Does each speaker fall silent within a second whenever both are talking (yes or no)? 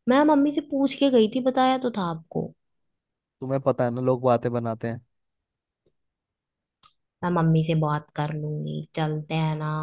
yes